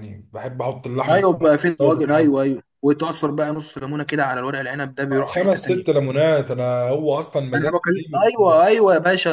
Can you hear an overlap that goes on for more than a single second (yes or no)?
yes